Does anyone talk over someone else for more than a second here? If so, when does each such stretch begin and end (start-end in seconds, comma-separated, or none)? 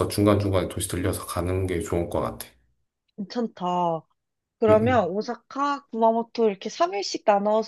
none